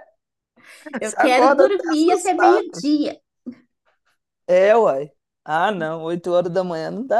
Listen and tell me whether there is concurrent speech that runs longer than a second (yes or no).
yes